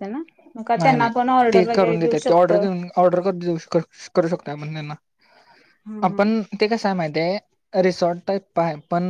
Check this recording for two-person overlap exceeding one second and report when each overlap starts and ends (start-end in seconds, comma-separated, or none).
0.8-2.6